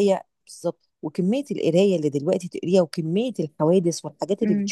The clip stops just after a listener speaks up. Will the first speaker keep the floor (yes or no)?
yes